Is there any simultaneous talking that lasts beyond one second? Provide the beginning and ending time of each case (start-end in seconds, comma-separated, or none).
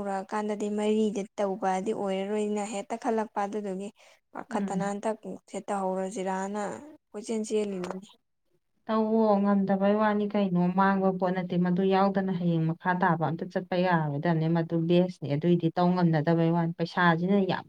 none